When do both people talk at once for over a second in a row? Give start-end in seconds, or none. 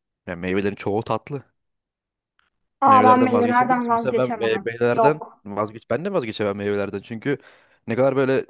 2.9-5.4